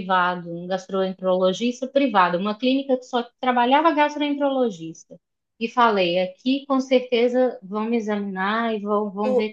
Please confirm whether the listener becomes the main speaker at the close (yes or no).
no